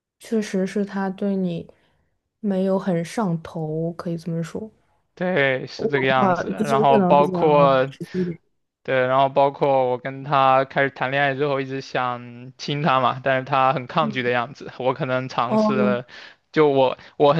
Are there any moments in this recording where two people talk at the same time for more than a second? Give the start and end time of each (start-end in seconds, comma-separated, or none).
5.8-7.9